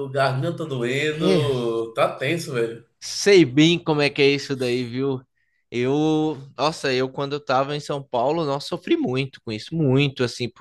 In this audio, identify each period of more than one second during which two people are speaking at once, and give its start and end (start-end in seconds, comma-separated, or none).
none